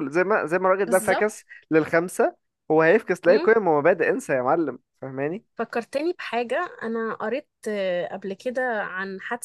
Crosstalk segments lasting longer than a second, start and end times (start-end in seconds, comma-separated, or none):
none